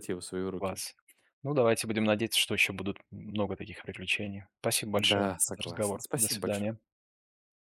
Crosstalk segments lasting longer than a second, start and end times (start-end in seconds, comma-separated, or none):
4.9-6.7